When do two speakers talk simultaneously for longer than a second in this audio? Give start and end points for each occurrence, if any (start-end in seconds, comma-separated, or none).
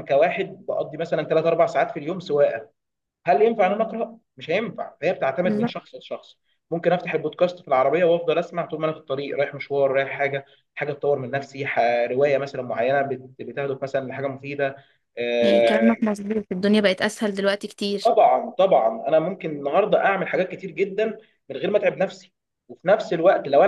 none